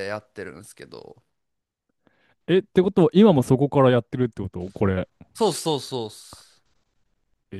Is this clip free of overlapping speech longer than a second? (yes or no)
yes